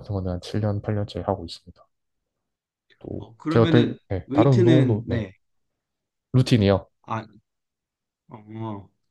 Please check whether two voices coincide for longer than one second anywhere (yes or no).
yes